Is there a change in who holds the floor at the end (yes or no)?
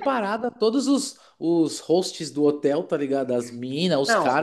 no